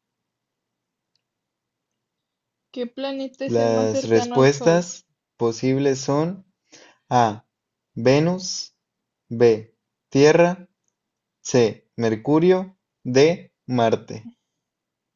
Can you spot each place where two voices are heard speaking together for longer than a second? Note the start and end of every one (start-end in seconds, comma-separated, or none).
3.5-4.9